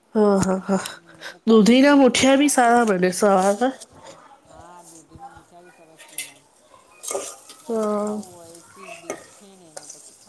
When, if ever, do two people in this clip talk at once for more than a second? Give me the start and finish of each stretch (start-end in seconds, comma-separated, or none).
1.8-3.5